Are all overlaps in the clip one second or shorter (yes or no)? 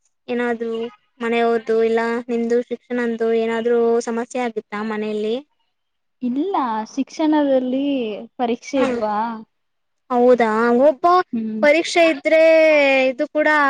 yes